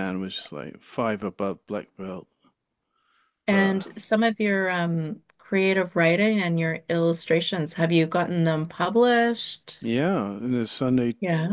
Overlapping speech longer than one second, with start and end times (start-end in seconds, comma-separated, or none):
none